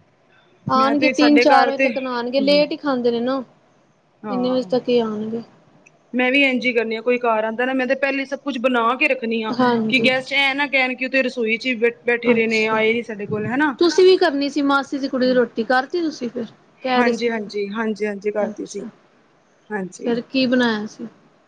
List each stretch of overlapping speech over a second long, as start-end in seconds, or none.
0.8-2.6